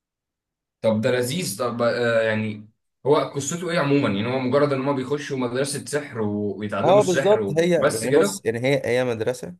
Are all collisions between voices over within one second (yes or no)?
no